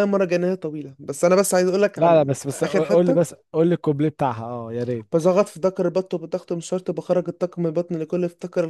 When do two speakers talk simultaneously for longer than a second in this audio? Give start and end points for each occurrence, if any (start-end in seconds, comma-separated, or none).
1.9-3.4